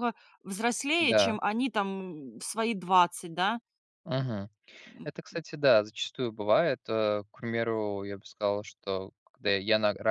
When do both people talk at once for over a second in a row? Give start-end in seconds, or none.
none